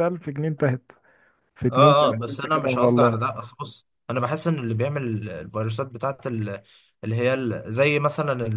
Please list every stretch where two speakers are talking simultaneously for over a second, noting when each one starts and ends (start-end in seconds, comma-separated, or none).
1.7-3.2